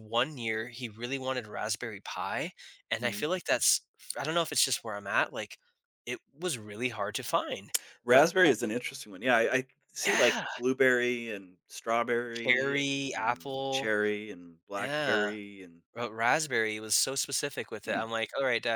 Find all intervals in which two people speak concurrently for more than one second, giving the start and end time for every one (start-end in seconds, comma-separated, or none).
12.3-13.9